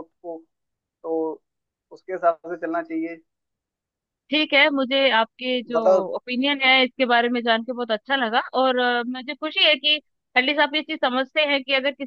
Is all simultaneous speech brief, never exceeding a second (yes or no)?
yes